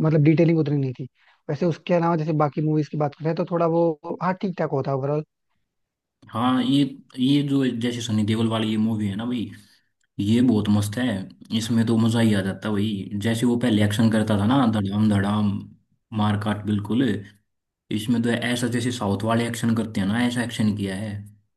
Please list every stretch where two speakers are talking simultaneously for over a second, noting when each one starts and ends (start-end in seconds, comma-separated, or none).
none